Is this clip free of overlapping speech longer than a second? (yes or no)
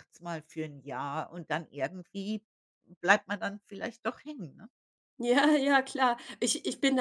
yes